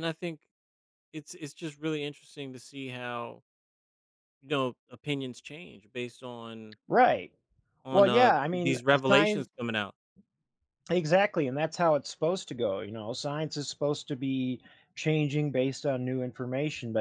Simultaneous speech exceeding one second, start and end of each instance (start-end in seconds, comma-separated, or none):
7.9-9.5